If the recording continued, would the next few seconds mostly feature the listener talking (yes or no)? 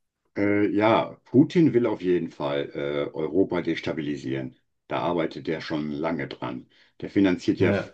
no